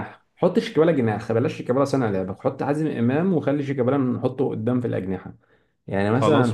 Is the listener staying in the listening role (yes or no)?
yes